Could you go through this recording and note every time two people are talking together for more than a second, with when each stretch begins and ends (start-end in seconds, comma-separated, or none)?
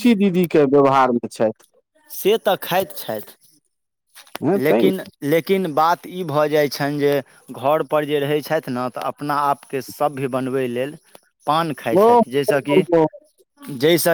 none